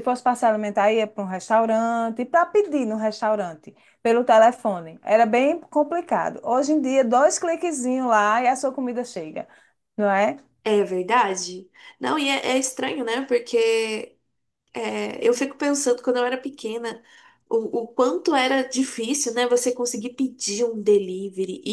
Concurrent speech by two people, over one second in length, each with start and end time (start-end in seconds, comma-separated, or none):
none